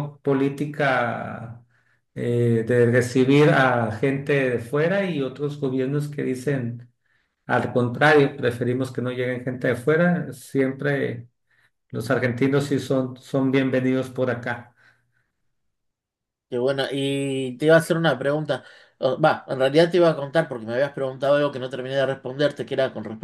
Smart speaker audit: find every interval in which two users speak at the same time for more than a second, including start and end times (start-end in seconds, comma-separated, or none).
none